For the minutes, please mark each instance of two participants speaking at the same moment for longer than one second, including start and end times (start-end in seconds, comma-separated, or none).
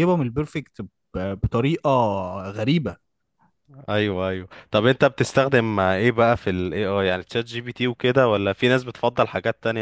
none